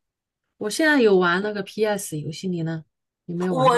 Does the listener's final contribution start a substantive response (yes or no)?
yes